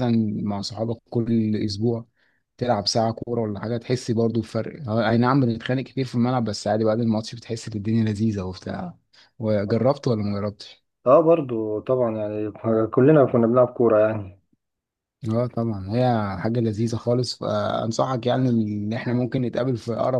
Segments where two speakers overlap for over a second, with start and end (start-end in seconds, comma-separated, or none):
none